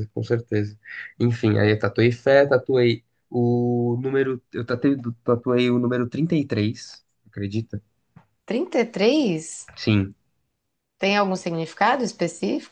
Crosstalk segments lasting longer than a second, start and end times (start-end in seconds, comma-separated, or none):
none